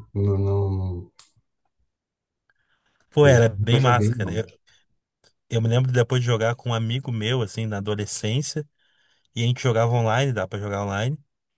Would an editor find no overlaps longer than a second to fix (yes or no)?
no